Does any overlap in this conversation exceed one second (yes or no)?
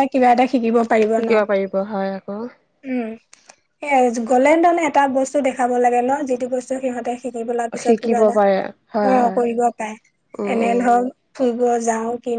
no